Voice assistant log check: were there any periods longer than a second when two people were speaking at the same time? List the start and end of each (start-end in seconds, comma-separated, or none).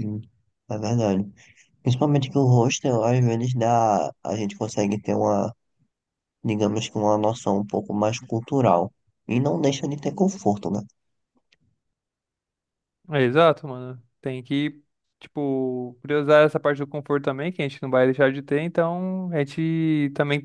none